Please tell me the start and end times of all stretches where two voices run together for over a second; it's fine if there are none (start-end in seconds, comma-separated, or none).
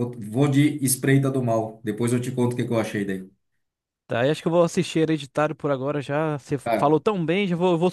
none